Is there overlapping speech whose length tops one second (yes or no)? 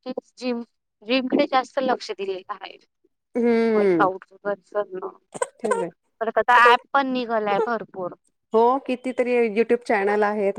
no